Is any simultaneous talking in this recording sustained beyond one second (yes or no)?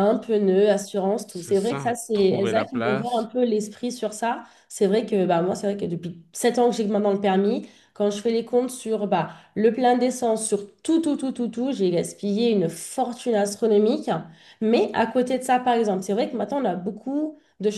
yes